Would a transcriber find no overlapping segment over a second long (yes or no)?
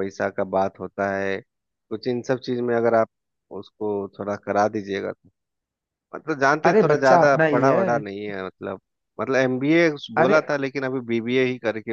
no